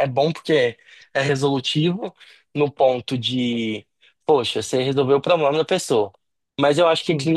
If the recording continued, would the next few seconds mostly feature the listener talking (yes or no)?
no